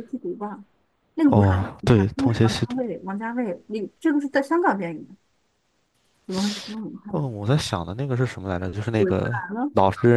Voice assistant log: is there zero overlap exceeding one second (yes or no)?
no